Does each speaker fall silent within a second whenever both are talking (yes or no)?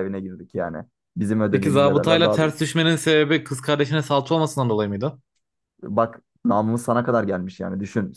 no